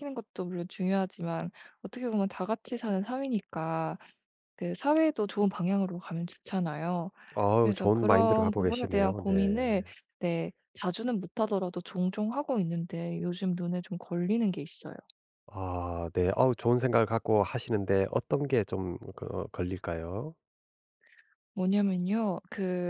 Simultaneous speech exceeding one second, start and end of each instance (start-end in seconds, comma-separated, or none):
7.6-9.3